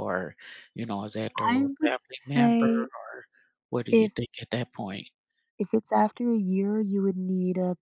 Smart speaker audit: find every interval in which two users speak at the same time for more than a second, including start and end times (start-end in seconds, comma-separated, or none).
1.4-2.9